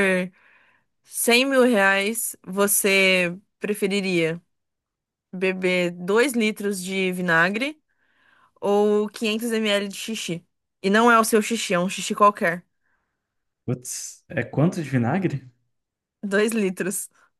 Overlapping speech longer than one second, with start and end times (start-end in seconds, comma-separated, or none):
none